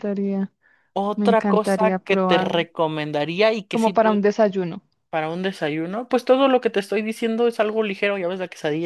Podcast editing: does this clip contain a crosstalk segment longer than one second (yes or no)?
yes